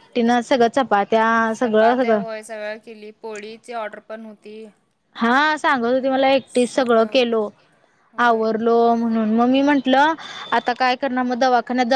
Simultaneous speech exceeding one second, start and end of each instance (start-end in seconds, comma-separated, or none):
none